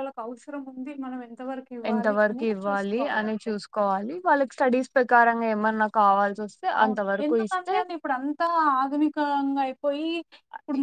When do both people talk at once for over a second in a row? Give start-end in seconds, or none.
none